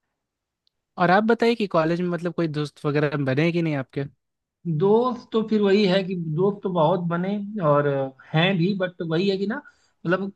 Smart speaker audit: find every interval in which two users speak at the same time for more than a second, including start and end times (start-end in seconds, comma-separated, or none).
none